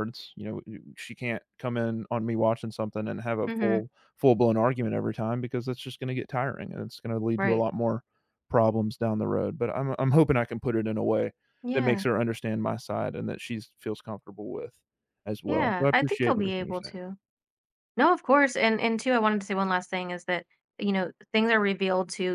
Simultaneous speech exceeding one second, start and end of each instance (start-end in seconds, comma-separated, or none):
15.4-17.0